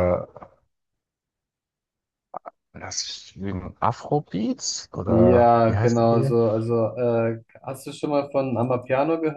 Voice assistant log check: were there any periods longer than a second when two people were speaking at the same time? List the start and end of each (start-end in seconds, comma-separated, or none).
5.0-6.3